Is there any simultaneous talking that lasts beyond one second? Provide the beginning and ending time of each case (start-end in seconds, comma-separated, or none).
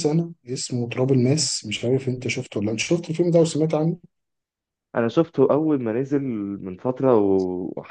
none